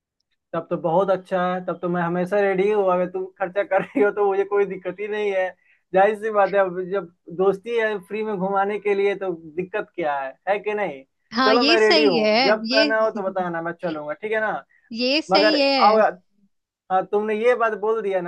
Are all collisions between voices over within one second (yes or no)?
no